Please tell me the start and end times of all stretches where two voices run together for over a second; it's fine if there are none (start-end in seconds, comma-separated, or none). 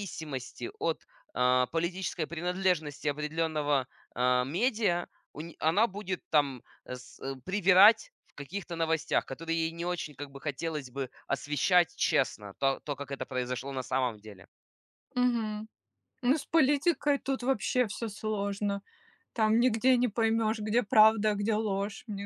none